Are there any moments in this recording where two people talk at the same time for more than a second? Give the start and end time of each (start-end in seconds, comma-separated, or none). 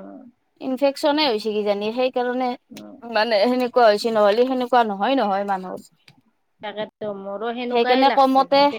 none